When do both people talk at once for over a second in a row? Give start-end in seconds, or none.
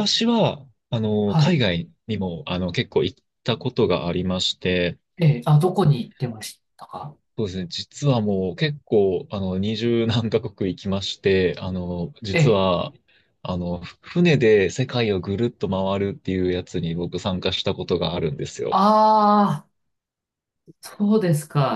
none